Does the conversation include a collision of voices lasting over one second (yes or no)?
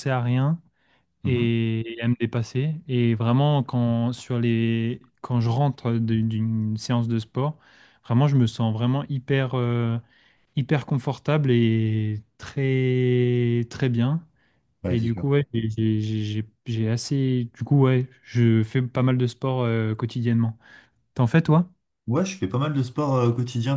no